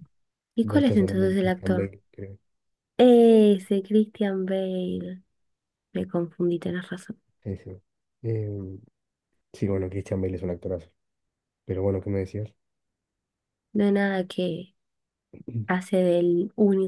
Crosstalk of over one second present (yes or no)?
yes